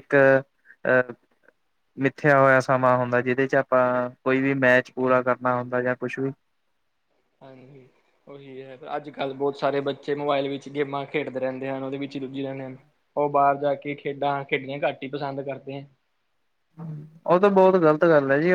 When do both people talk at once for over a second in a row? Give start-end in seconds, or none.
none